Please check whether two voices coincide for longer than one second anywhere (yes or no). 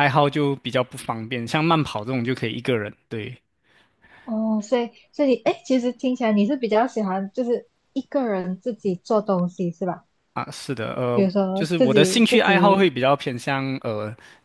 yes